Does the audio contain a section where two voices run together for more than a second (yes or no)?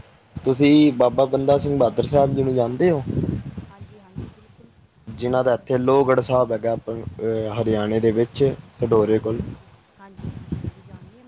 no